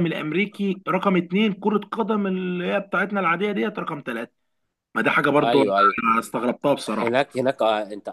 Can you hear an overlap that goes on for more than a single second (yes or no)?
no